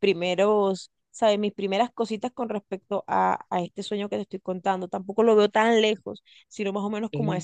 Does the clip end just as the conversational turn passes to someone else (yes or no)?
no